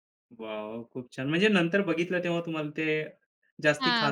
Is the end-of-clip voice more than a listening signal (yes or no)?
yes